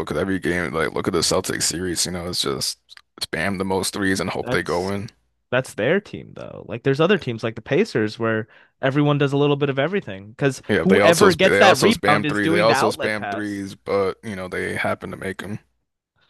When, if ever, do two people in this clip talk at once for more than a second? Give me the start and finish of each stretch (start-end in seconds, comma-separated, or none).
10.7-13.6